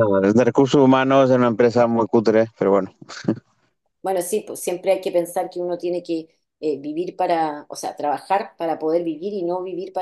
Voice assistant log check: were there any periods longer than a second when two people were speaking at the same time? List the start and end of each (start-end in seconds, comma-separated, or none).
none